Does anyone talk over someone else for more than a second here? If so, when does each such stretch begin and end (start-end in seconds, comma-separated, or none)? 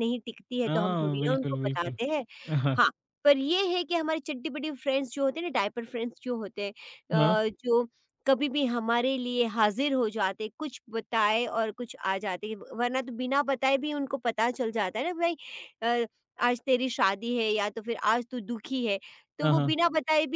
0.7-2.0